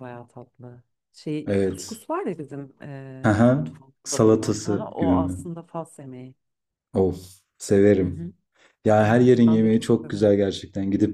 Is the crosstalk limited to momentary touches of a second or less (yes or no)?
no